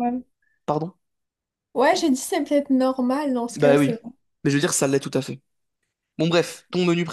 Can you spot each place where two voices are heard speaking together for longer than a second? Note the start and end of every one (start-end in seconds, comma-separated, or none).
none